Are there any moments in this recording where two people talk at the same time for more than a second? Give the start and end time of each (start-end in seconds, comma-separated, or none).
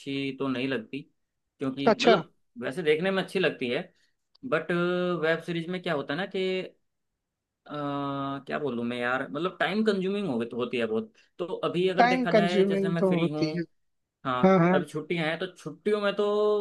12.0-13.4